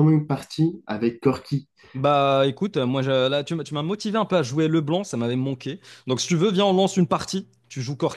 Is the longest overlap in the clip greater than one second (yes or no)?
no